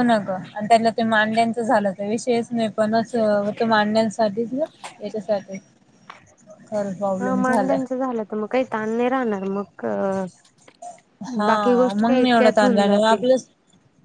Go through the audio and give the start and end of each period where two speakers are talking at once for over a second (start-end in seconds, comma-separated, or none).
11.5-13.2